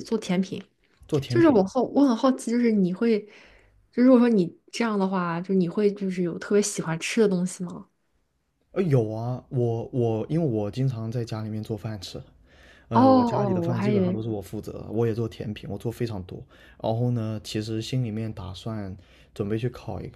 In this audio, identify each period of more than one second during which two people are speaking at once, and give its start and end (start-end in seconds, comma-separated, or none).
12.9-14.2